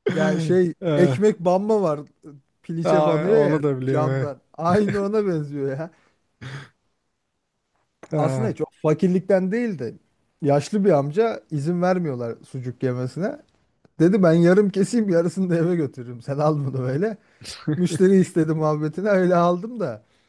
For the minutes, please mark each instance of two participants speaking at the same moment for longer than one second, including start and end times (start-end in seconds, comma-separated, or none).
2.8-4.3